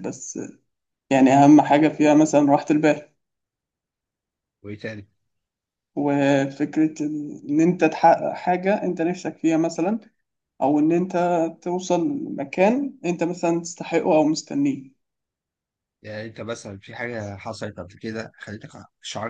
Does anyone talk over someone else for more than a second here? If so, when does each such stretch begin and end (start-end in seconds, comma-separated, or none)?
none